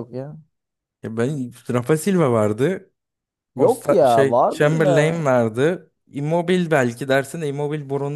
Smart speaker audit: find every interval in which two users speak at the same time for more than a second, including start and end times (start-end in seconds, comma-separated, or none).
3.6-5.3